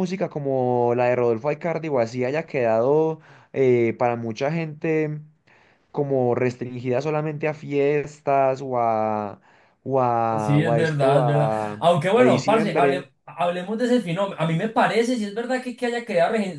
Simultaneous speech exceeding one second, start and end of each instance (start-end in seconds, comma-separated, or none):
10.4-13.1